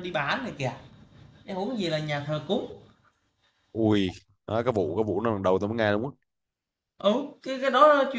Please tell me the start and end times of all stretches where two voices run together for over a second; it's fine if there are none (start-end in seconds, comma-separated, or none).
none